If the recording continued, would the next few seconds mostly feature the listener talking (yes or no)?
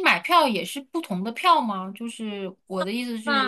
yes